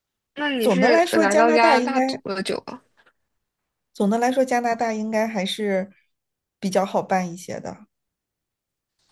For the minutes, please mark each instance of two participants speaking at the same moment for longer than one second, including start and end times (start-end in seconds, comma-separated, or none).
0.6-2.0